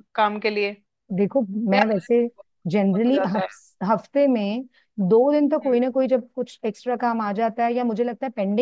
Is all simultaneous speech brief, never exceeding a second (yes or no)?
yes